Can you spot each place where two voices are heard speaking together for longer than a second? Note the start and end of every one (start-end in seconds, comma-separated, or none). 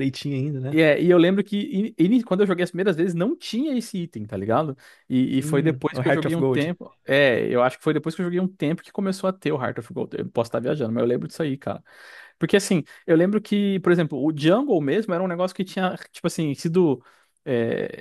5.4-6.7